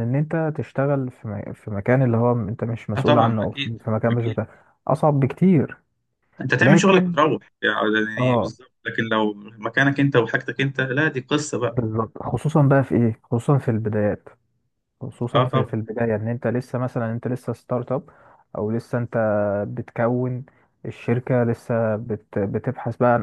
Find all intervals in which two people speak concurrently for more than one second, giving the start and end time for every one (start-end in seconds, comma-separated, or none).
3.0-4.4